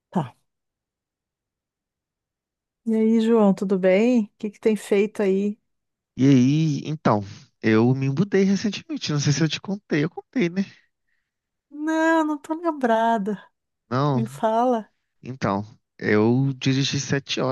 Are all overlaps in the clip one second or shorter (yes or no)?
yes